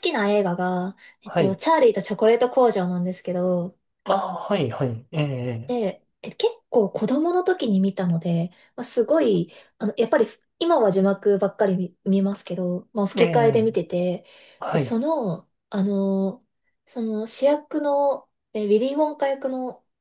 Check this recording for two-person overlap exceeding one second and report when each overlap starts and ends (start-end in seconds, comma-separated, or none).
none